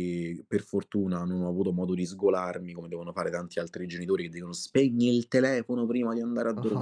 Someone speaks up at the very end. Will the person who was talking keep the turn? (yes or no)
no